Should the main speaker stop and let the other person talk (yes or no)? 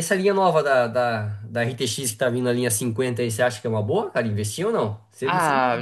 yes